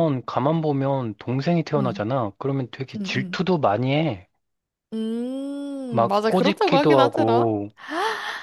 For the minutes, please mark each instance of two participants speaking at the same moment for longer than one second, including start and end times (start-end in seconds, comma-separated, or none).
5.9-7.5